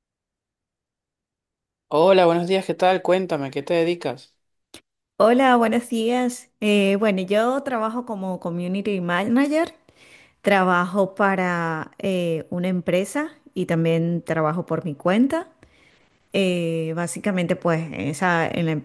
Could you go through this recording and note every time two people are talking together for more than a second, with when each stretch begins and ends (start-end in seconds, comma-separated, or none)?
none